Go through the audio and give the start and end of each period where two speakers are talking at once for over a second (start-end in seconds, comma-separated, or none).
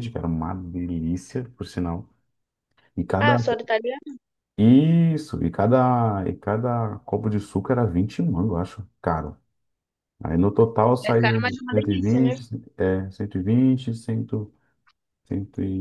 11.1-12.4